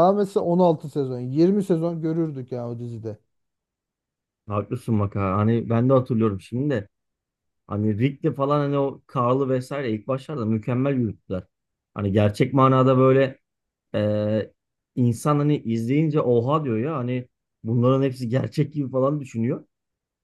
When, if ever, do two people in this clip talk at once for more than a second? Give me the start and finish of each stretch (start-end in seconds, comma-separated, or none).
none